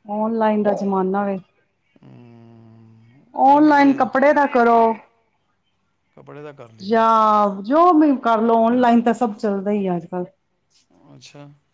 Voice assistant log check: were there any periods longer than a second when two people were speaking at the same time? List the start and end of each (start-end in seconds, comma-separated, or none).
none